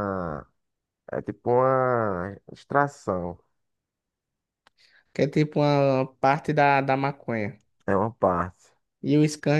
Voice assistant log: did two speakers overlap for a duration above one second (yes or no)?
no